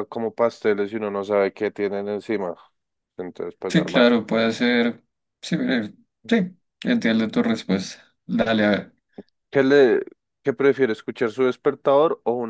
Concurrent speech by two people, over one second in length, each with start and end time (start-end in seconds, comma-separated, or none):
none